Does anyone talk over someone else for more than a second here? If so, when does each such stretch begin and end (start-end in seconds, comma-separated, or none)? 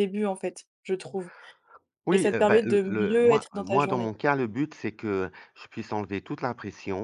2.1-4.1